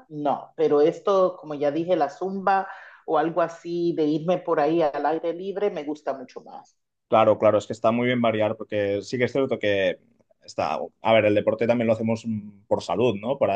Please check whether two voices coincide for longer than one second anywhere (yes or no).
no